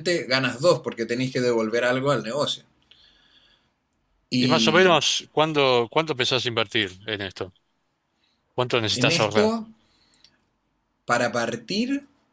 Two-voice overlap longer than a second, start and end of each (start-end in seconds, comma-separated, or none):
none